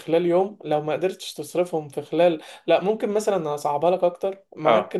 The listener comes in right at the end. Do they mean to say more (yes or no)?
no